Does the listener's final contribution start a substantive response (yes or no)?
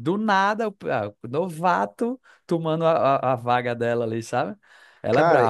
yes